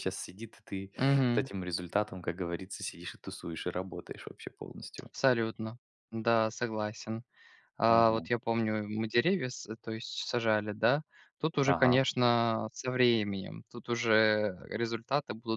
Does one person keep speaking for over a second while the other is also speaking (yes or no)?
no